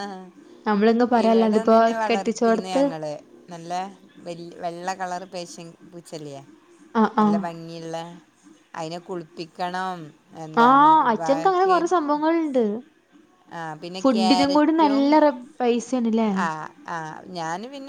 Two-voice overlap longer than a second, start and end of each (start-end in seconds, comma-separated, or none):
1.2-2.8